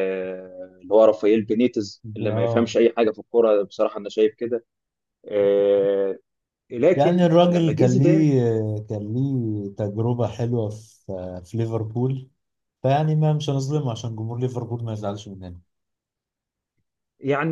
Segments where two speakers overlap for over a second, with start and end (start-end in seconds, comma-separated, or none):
7.0-8.3